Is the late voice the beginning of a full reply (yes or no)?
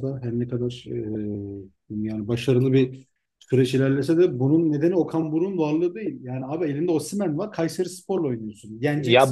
yes